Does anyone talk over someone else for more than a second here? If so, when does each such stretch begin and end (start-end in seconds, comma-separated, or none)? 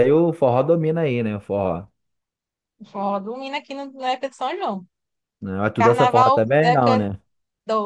5.8-7.0